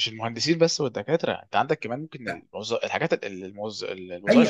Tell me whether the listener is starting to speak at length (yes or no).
yes